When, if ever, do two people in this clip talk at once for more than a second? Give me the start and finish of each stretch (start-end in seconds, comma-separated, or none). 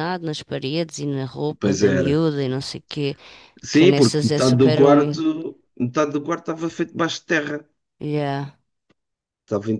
3.7-5.2